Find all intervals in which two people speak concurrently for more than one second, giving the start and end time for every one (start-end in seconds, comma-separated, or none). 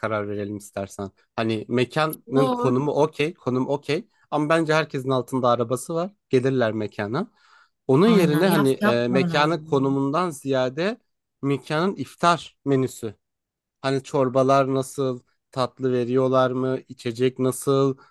8.1-9.8